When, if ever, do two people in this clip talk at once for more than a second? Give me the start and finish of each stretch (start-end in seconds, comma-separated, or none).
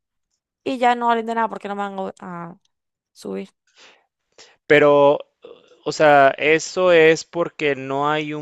none